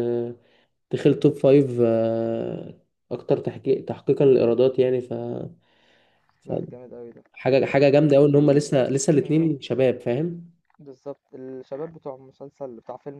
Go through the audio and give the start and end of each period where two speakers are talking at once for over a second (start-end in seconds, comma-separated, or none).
none